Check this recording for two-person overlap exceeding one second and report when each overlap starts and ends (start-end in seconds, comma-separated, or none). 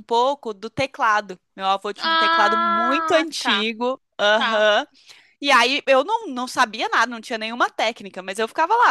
2.0-3.7